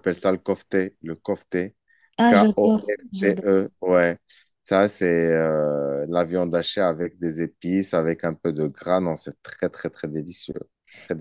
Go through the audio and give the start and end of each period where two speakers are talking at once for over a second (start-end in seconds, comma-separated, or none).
2.3-3.6